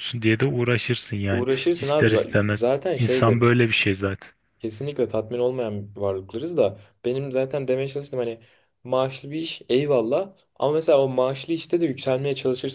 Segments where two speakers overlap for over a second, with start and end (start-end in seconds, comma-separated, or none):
1.3-3.4